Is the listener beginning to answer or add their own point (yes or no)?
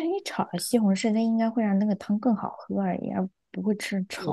yes